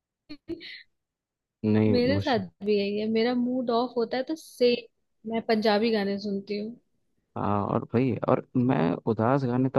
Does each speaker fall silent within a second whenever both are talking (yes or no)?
yes